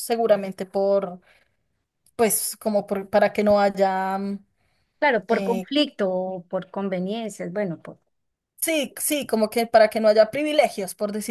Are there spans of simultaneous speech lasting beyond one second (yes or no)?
no